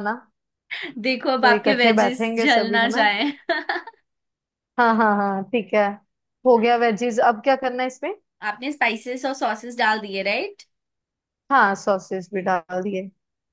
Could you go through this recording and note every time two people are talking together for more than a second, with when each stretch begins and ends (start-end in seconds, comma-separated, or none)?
1.4-3.0